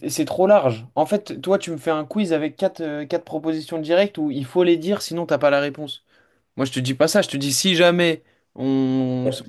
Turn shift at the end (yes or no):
yes